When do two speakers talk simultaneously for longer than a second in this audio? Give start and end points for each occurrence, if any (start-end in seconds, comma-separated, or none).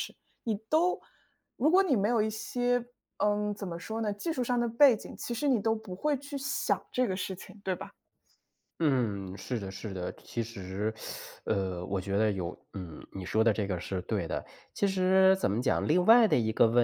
none